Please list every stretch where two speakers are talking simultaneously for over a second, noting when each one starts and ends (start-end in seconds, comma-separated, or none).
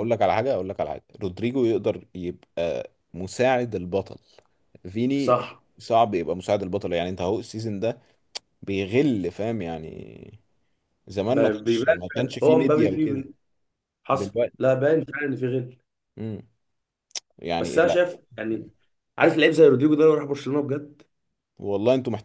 11.3-13.2